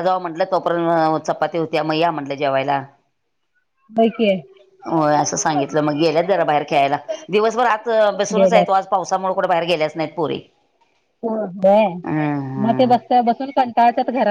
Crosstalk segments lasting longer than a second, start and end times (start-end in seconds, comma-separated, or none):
none